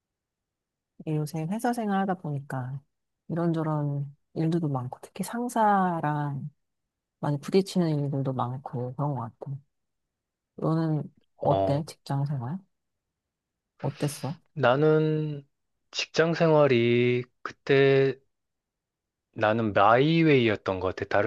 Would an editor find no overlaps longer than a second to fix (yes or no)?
yes